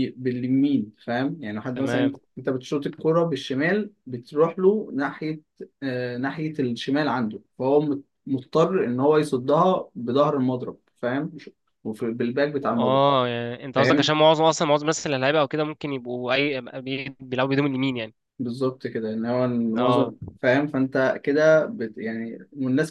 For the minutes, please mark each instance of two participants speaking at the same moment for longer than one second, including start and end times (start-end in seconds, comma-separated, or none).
none